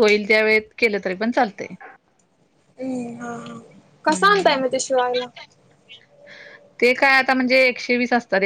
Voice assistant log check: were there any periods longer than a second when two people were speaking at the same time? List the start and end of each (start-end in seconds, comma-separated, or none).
none